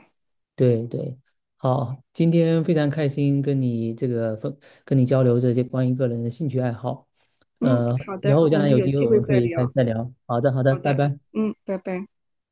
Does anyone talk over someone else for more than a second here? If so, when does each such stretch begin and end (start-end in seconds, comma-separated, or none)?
7.6-9.7